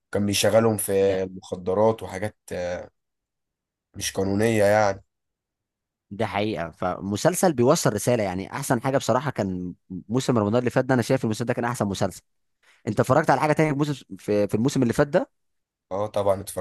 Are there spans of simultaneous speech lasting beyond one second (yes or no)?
no